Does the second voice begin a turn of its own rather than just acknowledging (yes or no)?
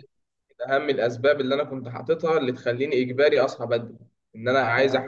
no